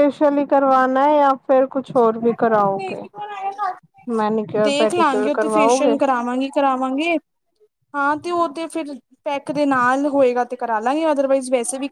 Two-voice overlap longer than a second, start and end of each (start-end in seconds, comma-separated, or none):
4.7-5.9